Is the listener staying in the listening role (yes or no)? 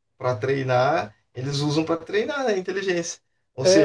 no